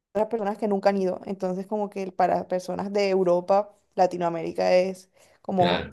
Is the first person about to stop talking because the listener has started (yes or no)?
no